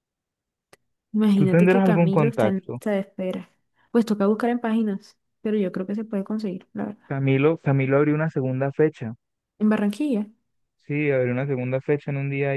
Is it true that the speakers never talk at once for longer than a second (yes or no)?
no